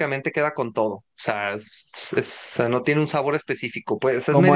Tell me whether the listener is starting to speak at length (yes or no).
yes